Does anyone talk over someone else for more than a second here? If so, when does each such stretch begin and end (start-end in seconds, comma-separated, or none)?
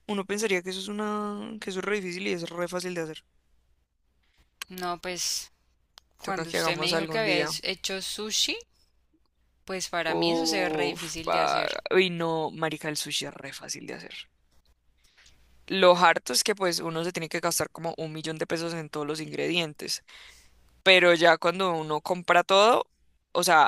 6.2-7.5, 10.1-11.7